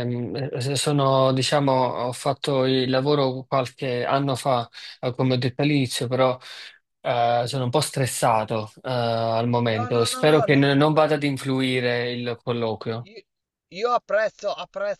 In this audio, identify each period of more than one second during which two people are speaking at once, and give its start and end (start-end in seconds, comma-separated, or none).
9.8-11.3